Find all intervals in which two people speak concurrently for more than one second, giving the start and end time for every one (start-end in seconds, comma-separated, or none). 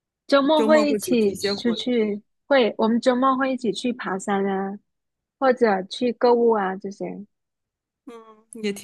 0.6-1.8